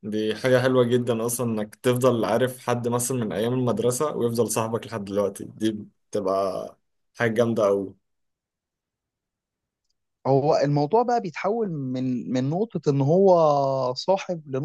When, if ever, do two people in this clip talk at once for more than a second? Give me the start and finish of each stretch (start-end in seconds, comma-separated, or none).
none